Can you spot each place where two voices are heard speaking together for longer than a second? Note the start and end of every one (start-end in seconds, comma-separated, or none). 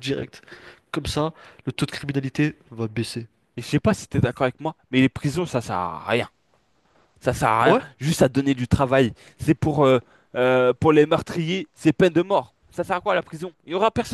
none